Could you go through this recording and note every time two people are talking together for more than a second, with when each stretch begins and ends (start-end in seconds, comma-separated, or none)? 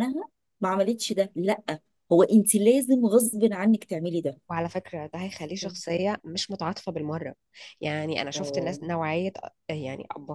none